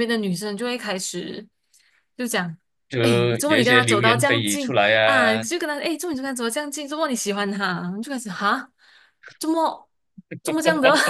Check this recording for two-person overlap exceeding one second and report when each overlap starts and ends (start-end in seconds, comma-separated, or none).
3.5-5.4